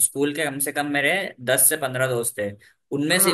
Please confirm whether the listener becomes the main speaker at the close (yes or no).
no